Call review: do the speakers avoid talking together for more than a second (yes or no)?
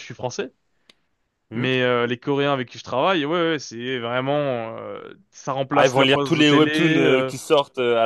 no